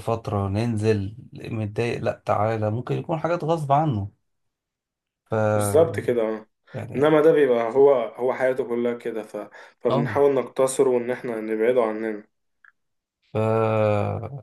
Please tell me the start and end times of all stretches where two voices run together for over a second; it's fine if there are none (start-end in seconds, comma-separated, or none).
none